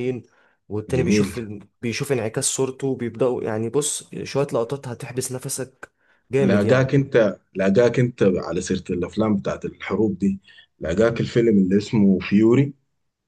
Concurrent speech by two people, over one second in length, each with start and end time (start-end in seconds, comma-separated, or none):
none